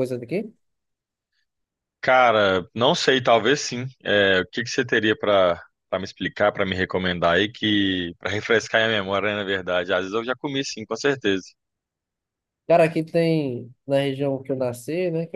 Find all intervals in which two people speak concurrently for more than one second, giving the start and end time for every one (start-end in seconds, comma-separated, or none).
none